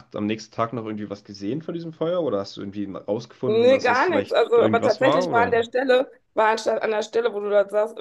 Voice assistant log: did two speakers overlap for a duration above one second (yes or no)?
yes